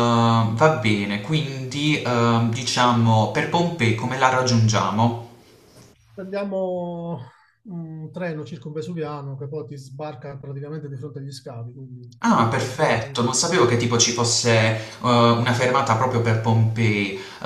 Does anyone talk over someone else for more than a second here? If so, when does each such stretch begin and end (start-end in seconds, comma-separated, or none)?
12.5-14.0